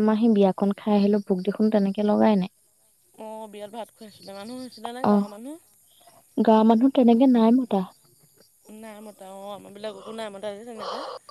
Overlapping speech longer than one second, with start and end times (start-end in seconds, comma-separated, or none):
none